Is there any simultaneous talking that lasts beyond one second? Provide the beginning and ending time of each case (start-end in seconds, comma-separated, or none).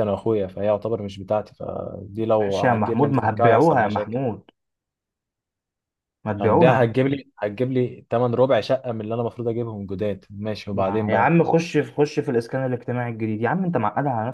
2.4-4.2